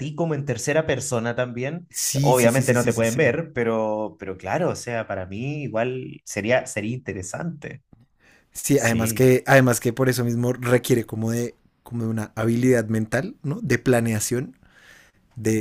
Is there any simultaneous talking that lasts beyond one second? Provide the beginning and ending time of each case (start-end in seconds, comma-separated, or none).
1.9-3.4